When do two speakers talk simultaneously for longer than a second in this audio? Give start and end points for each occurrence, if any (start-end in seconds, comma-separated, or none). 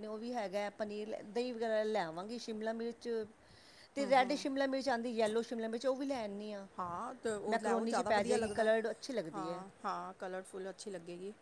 7.5-8.7